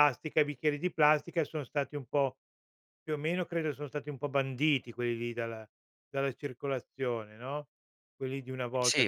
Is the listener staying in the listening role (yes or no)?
no